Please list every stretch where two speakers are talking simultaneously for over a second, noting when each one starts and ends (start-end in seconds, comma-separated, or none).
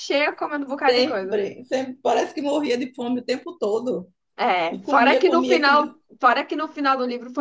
4.7-6.0